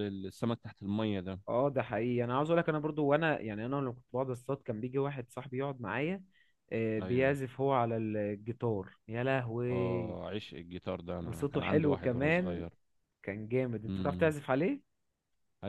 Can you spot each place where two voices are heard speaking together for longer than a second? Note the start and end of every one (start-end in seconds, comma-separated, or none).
11.2-12.7